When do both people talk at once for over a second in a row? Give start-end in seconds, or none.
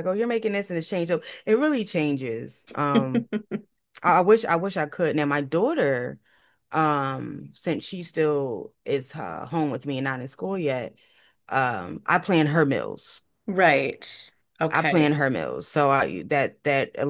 none